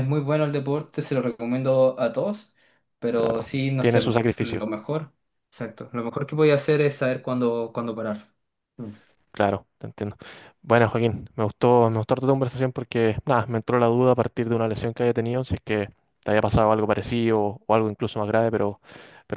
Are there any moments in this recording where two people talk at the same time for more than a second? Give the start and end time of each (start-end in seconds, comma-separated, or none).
3.1-4.8